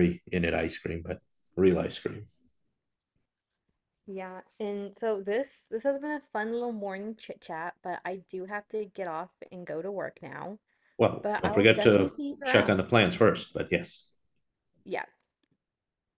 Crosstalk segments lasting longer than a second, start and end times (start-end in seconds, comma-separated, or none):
11.2-12.9